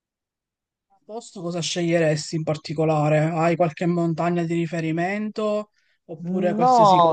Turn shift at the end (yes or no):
yes